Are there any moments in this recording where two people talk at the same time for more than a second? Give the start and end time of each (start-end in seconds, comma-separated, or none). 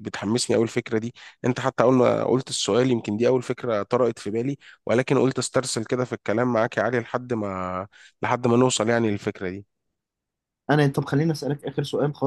none